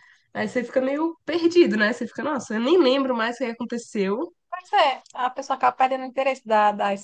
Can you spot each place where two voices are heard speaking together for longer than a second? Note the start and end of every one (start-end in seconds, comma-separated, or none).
none